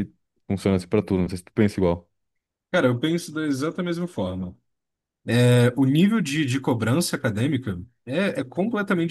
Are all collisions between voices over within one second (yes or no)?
yes